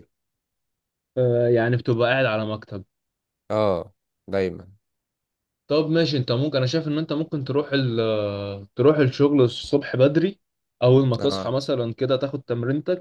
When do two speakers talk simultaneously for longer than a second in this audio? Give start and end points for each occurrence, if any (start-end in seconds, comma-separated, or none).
none